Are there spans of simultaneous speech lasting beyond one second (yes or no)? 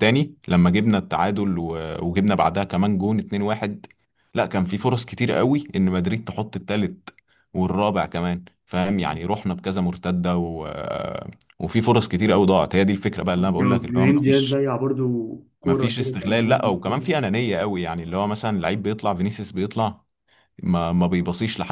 yes